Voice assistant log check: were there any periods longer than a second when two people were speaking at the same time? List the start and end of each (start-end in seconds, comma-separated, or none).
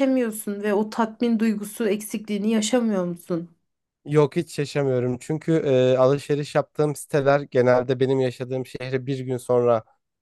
none